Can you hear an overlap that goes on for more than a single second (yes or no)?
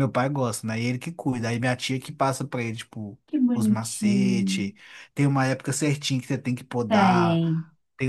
yes